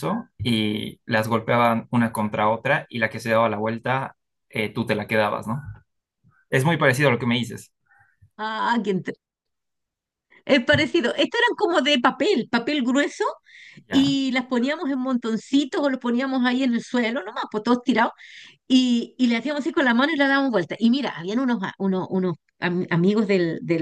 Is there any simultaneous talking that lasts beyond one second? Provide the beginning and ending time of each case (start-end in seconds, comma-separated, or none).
none